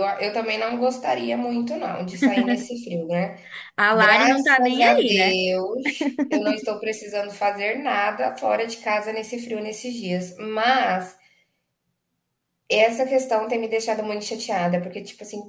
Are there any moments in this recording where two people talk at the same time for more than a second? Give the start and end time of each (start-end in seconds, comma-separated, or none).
3.9-5.4